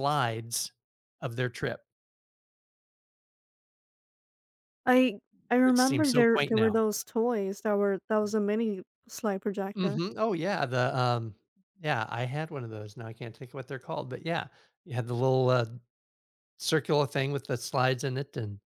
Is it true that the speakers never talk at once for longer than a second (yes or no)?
no